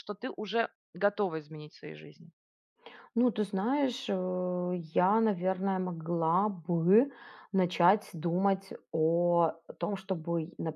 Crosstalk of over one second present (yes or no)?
no